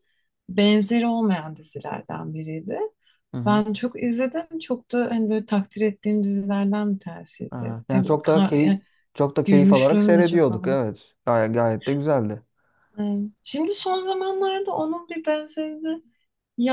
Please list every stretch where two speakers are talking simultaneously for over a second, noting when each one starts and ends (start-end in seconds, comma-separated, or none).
7.5-8.8, 9.4-10.8